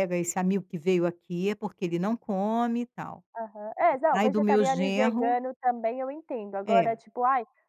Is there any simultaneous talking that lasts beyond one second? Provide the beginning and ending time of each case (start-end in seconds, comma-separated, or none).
4.1-5.4